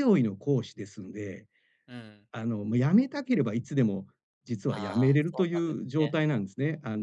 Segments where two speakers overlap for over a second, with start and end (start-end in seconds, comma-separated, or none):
4.7-6.2